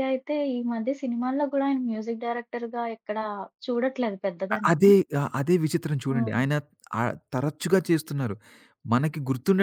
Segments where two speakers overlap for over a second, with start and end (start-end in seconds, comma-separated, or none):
none